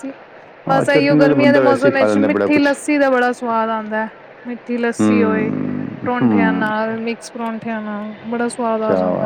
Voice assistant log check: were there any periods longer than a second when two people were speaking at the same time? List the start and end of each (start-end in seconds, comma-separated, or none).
0.7-2.6